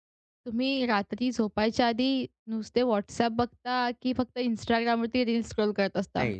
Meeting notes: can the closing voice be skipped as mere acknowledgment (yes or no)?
no